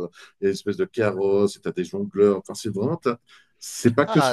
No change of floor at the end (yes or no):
no